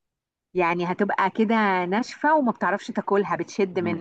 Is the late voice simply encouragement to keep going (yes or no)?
no